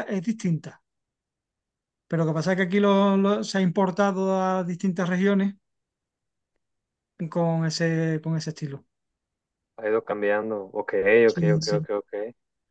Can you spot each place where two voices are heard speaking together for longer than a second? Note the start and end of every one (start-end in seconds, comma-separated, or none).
none